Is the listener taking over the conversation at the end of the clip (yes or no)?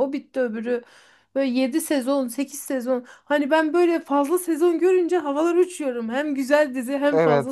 yes